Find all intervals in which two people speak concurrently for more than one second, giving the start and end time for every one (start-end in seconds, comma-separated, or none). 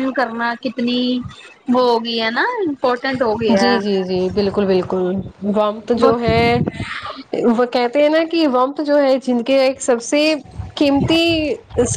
none